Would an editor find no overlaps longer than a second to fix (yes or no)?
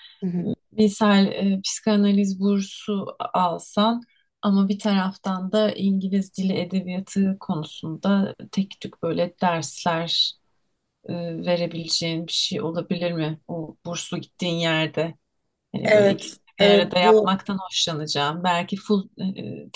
no